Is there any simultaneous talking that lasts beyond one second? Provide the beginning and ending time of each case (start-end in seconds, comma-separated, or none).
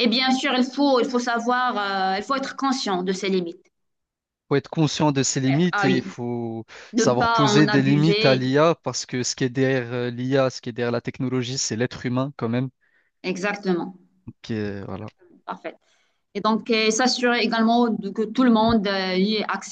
6.9-8.4